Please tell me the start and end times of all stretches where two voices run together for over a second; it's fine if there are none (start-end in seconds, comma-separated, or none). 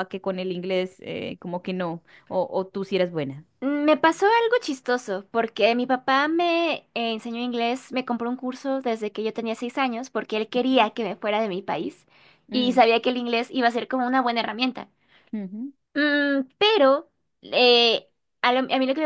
none